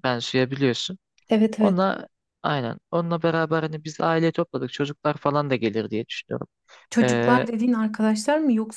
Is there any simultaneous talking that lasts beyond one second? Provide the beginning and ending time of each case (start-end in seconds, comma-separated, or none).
none